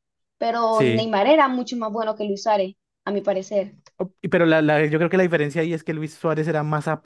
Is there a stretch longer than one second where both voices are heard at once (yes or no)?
no